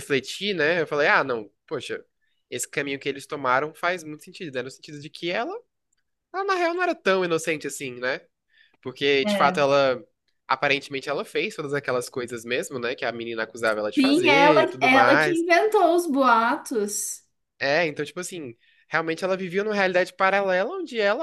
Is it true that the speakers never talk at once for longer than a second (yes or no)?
no